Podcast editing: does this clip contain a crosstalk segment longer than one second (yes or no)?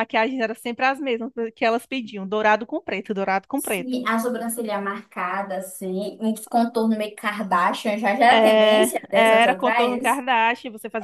yes